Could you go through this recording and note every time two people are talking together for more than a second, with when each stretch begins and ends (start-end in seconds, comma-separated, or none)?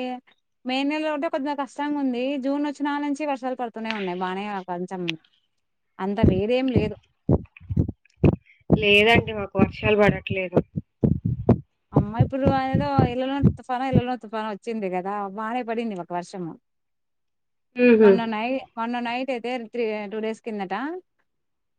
none